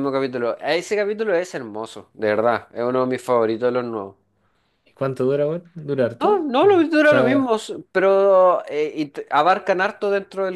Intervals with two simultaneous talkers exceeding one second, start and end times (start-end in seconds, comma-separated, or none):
6.2-7.5